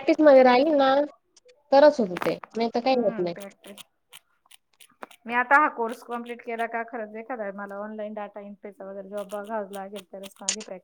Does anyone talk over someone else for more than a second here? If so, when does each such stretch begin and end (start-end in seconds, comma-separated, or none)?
none